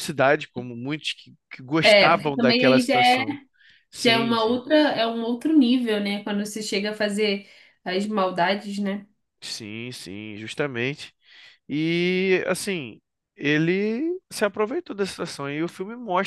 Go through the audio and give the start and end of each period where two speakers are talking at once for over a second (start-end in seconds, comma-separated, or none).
1.8-3.2